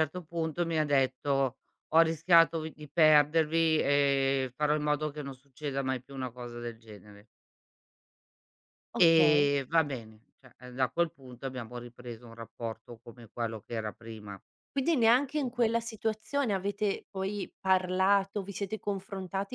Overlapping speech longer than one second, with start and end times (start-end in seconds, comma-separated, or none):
none